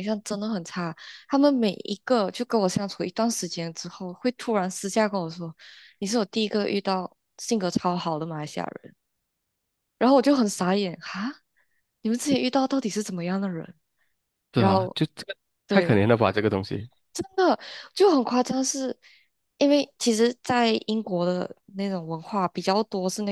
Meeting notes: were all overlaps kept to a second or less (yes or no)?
yes